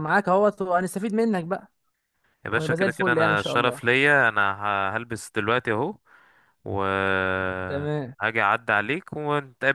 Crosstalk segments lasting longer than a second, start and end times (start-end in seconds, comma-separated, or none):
2.5-3.8